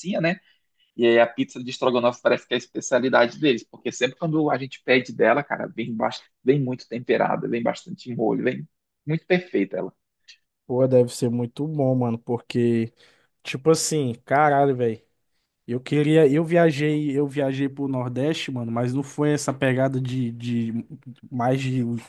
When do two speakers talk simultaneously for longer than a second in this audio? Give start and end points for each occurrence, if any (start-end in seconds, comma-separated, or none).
none